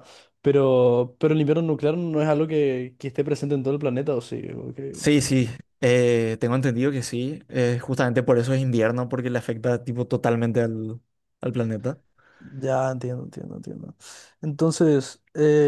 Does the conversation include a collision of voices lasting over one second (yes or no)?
no